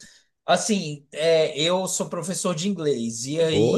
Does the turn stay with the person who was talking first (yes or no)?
yes